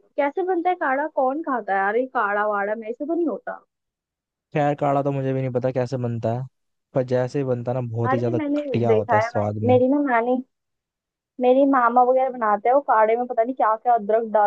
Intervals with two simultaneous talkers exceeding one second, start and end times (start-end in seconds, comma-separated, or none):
8.1-9.8